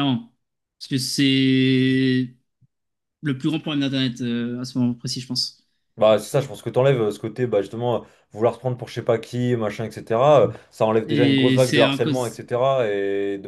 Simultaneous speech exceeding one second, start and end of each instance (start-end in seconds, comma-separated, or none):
11.1-12.4